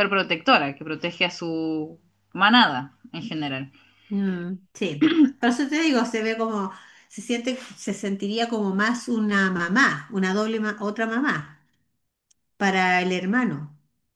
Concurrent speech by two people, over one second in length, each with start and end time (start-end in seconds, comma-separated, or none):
none